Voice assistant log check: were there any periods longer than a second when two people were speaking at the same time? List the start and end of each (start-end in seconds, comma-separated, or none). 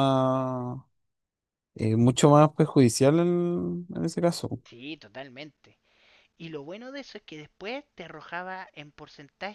none